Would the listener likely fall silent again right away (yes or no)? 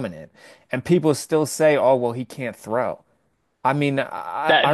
no